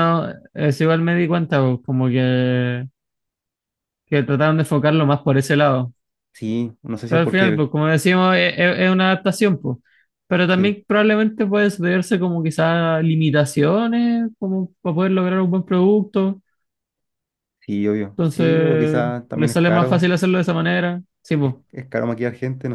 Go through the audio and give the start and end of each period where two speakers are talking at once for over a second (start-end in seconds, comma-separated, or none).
18.2-20.1